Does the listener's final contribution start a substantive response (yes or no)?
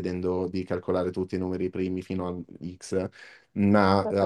no